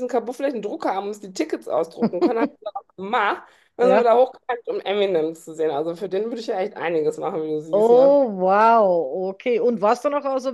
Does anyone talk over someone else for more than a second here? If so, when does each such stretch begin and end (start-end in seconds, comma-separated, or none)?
none